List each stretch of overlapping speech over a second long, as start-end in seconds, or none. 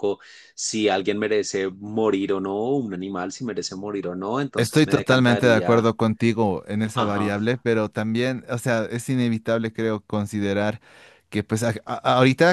4.5-5.9